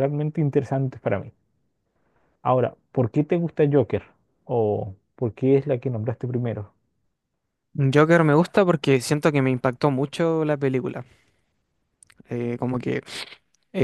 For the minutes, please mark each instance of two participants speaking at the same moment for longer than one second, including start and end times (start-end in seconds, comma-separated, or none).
none